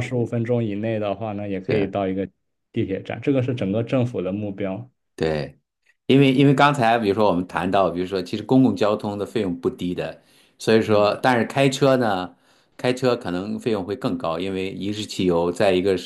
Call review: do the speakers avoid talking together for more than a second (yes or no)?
yes